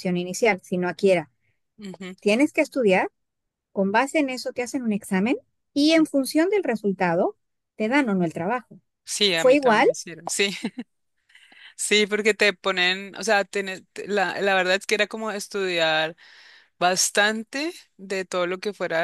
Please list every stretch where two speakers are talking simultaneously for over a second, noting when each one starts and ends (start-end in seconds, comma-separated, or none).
none